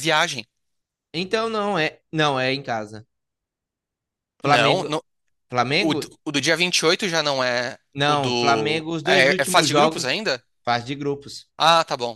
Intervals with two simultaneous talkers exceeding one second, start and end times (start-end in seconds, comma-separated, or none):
7.9-10.1